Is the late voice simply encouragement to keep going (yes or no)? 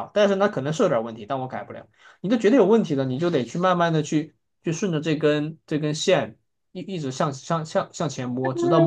no